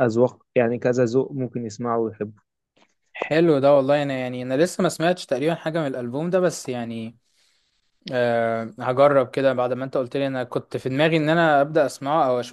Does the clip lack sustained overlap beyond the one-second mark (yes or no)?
yes